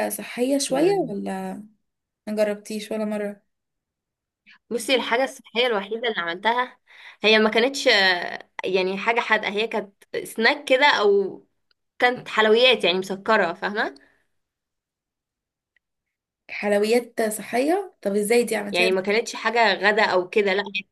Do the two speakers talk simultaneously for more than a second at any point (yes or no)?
no